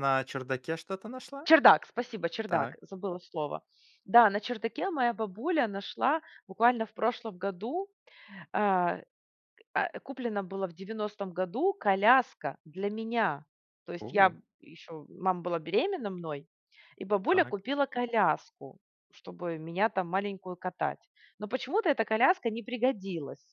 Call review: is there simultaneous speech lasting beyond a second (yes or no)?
no